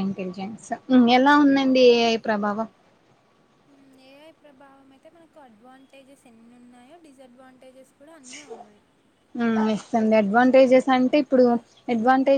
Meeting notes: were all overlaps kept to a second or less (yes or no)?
yes